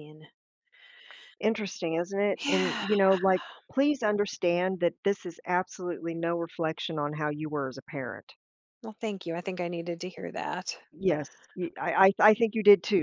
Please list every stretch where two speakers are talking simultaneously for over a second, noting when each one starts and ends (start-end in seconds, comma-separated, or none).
none